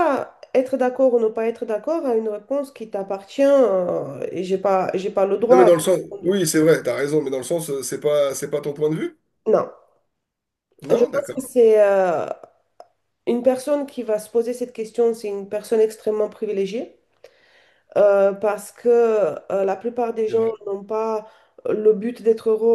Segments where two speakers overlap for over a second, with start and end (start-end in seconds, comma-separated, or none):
none